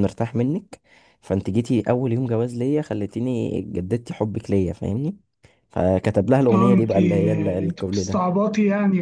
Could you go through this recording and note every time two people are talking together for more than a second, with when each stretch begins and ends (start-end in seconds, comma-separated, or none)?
6.5-8.2